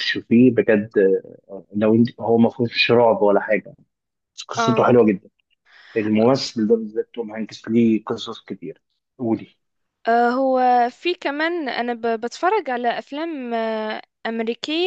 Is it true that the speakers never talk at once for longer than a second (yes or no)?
yes